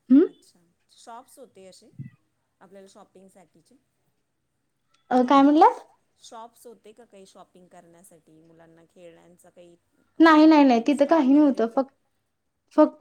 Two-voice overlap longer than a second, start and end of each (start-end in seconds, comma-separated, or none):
10.2-11.8